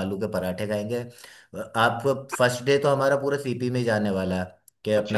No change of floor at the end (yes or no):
yes